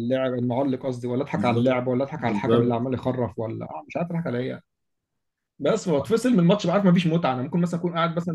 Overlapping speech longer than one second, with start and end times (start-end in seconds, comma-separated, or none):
1.4-2.9